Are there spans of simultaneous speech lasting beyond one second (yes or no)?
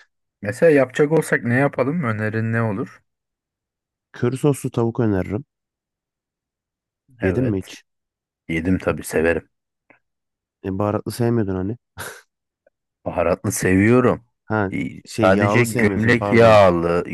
yes